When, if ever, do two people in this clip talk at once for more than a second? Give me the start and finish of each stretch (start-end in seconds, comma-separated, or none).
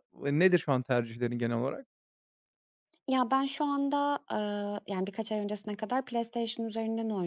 none